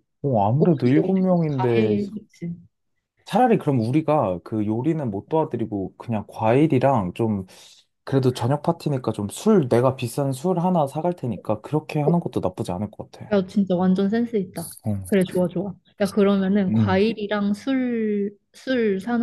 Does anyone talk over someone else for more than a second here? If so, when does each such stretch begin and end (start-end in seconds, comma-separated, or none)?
0.6-2.0